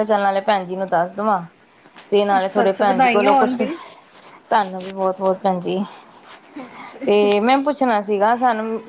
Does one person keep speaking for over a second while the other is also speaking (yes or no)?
yes